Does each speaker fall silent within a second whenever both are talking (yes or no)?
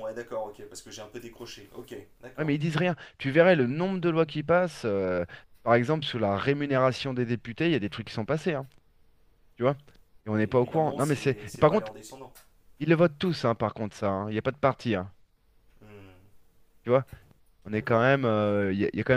no